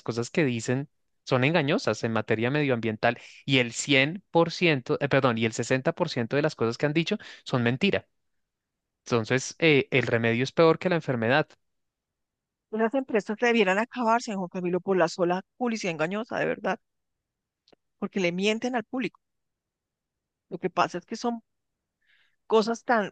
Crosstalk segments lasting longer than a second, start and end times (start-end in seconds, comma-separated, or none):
none